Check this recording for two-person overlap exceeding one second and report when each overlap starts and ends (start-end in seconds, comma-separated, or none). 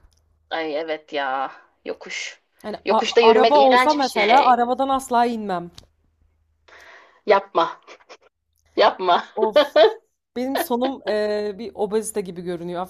2.8-4.6